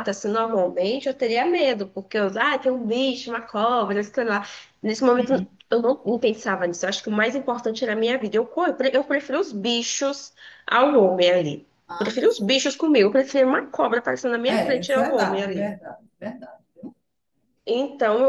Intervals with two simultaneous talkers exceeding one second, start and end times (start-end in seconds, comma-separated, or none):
14.4-15.8